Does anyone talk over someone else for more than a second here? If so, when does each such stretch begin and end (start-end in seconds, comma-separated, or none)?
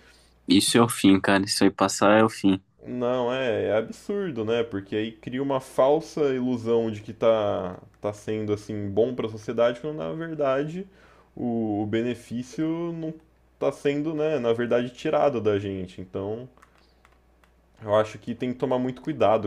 none